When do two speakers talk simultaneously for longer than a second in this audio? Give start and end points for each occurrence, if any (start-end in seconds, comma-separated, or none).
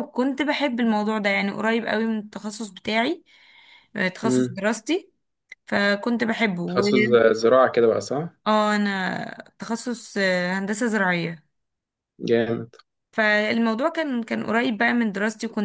none